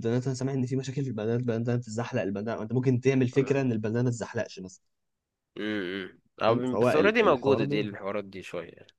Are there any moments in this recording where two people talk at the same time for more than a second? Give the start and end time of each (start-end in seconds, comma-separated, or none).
6.5-7.9